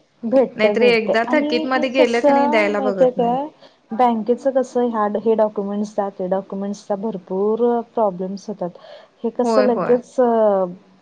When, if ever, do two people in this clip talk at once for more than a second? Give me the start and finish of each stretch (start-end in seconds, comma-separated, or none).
0.6-3.4